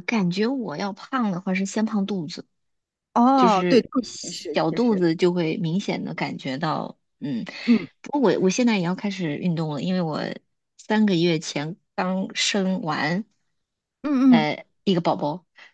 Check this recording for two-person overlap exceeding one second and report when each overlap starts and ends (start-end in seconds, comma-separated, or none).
3.4-5.0